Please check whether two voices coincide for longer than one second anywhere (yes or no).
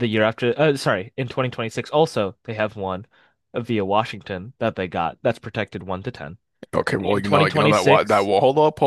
yes